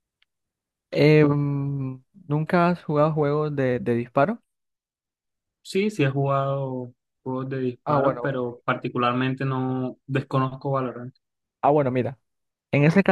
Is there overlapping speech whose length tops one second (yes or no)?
no